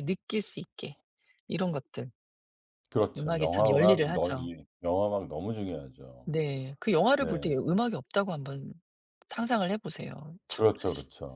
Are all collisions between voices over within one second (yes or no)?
no